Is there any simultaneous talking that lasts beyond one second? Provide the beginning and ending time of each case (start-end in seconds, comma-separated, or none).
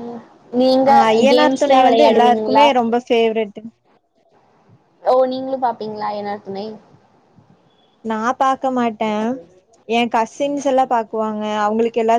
1.3-2.6